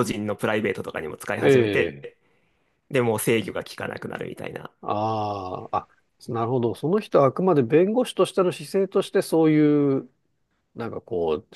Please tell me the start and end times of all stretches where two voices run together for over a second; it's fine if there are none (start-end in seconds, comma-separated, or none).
none